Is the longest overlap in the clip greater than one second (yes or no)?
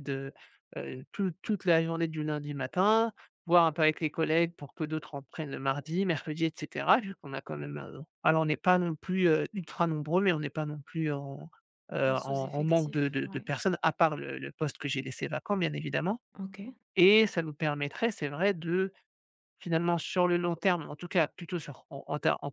yes